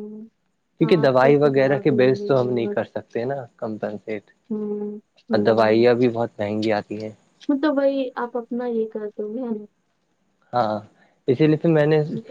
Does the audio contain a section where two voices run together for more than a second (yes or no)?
yes